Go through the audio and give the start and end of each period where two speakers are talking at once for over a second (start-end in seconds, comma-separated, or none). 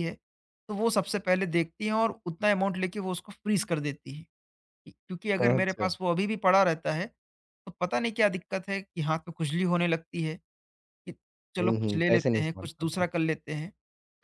11.6-13.0